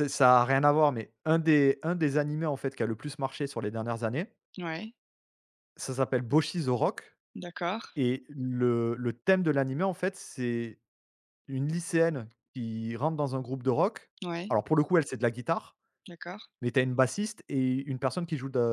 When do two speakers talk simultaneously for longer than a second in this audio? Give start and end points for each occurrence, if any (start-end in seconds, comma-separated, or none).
none